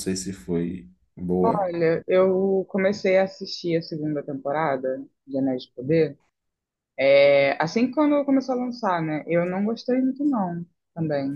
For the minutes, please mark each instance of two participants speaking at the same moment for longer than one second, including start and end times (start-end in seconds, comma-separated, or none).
none